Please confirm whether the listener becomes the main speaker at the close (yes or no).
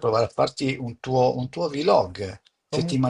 no